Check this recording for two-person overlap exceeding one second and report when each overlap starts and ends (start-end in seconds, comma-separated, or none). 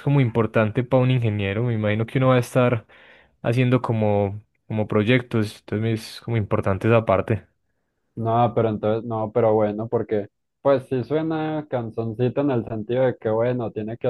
none